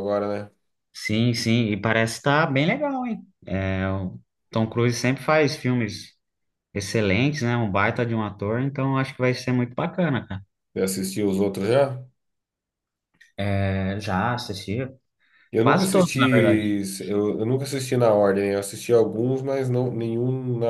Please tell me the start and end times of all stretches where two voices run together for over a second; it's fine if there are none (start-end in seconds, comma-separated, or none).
none